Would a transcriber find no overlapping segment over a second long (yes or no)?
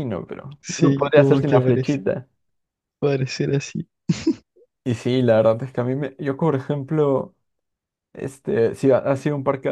no